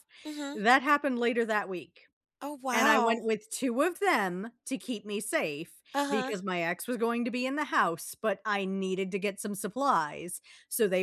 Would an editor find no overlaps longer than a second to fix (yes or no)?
yes